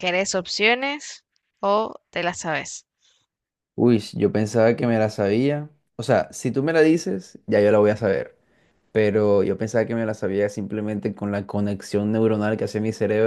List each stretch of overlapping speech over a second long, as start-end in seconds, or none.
none